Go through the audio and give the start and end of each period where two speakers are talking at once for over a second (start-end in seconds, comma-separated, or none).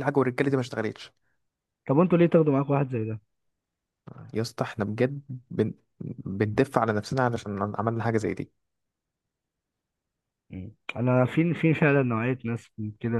none